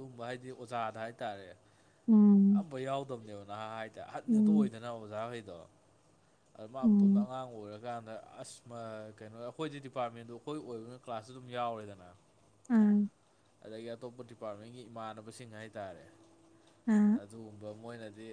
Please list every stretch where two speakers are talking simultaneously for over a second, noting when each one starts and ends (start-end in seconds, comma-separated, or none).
none